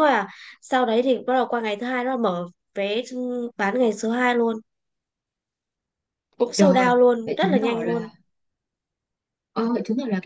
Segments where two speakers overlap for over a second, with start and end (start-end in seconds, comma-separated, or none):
6.5-8.1